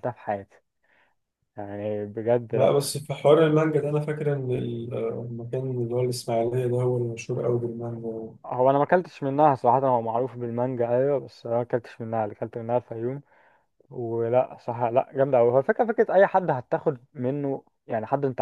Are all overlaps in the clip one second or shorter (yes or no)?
yes